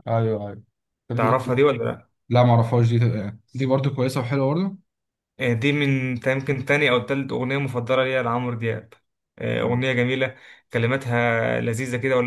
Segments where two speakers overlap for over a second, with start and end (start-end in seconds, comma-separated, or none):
none